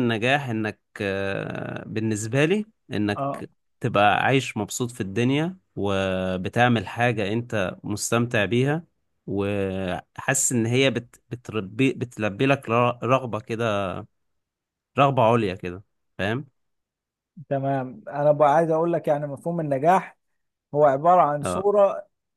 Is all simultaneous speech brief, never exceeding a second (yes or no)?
yes